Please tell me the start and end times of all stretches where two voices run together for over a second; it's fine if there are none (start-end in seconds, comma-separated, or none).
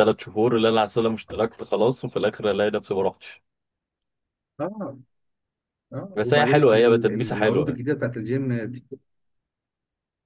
6.2-7.8